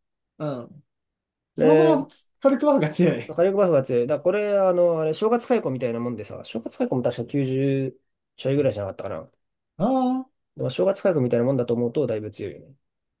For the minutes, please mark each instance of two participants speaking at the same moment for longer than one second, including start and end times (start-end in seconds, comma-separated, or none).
none